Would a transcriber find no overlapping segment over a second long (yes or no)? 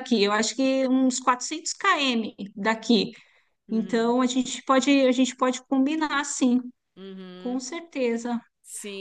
yes